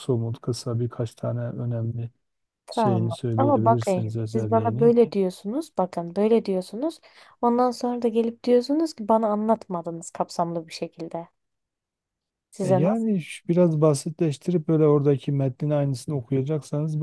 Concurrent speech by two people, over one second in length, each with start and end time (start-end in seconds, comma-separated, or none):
2.7-4.9